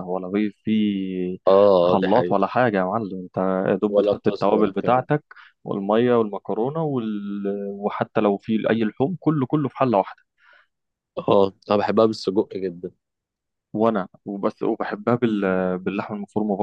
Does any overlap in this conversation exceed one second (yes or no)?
yes